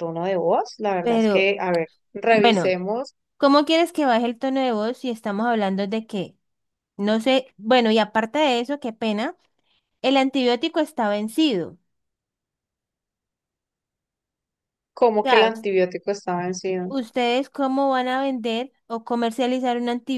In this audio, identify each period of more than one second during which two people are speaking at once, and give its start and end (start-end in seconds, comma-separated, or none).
none